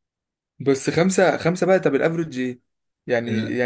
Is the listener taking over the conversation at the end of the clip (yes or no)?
no